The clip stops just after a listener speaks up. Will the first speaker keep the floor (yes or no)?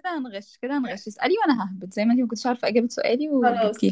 no